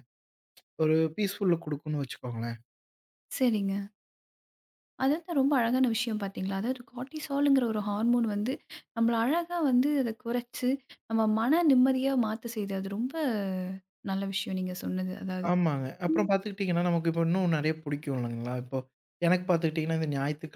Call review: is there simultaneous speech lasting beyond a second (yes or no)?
no